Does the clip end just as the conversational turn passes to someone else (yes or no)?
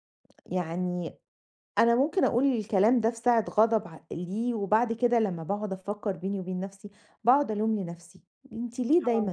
no